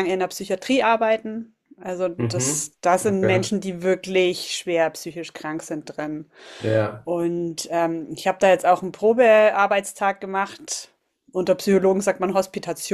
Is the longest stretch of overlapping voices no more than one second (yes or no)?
no